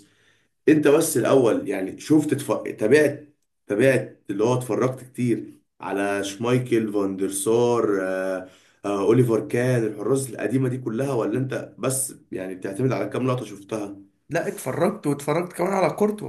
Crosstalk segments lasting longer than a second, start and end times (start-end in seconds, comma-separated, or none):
none